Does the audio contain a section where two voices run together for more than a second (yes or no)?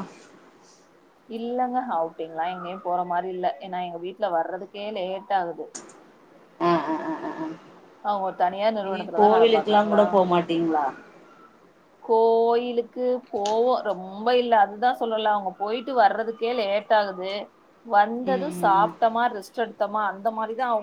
yes